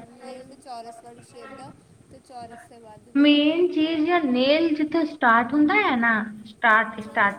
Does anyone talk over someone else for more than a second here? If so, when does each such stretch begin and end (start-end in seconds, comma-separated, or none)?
none